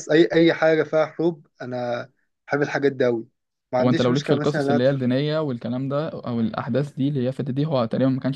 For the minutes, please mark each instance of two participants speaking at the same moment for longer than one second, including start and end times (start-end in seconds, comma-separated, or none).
3.8-5.1